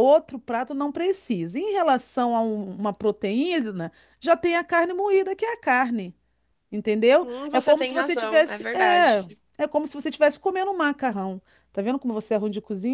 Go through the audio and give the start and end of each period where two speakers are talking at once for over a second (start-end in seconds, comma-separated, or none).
7.2-9.3